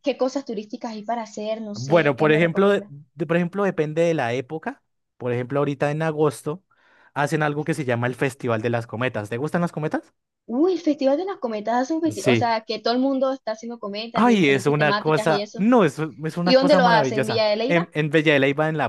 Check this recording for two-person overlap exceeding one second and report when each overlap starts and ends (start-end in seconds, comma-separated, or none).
1.7-2.9, 14.2-15.7, 16.4-17.9